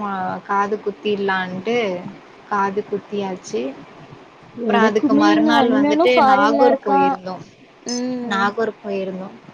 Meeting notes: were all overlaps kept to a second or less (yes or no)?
no